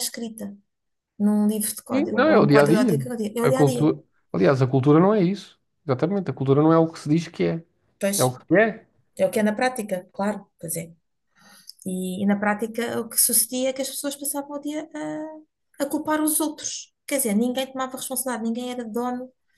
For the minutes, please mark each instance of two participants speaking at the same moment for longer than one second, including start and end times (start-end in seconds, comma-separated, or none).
1.9-3.9